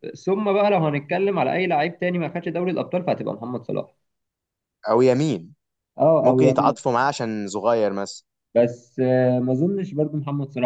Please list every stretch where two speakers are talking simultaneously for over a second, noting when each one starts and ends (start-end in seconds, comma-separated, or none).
none